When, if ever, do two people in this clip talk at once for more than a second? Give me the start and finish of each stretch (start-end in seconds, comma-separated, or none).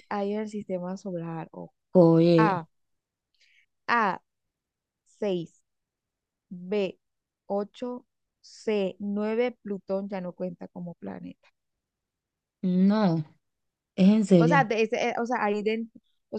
none